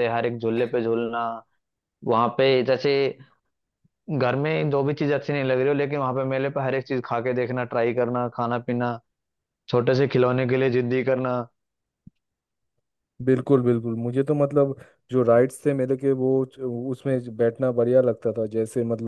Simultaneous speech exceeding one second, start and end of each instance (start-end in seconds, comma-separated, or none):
none